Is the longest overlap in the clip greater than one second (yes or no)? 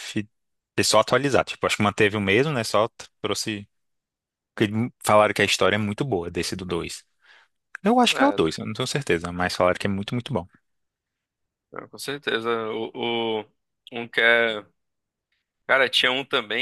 no